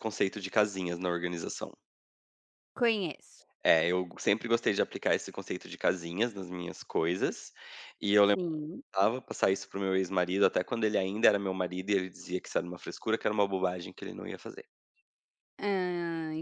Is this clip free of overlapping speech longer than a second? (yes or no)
yes